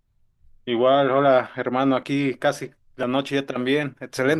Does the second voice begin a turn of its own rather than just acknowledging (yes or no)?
yes